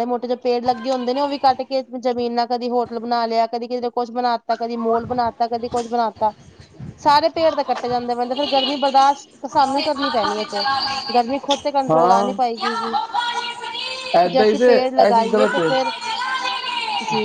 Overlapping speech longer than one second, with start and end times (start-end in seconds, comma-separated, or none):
14.3-15.7